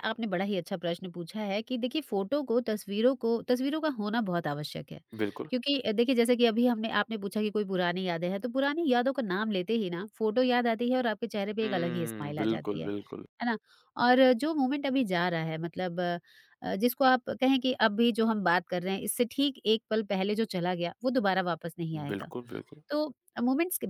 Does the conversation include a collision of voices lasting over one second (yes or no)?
yes